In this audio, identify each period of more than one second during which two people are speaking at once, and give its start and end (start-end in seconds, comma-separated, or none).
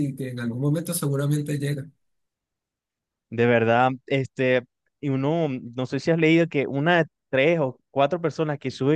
none